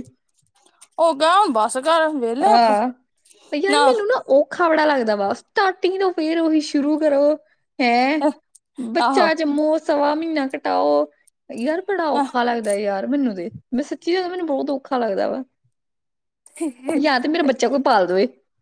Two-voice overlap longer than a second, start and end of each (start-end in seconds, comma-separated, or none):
none